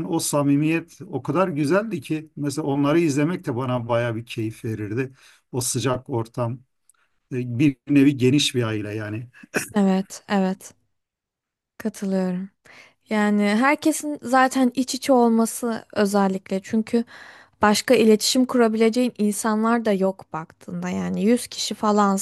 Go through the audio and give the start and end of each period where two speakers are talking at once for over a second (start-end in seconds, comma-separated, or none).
none